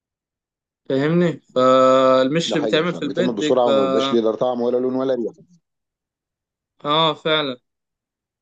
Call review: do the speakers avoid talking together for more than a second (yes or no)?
no